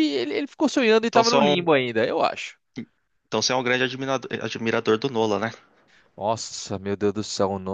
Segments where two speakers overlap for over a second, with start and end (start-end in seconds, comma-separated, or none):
none